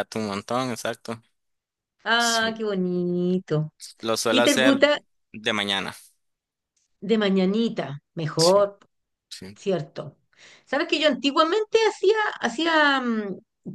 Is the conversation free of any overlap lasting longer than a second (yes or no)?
yes